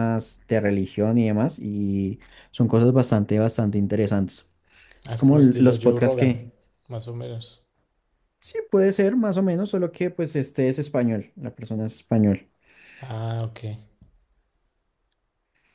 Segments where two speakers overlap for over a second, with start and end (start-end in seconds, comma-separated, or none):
5.1-6.4